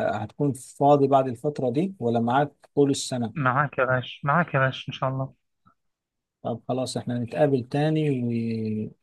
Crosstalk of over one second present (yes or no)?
no